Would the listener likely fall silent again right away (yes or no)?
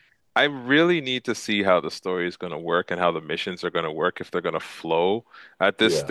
yes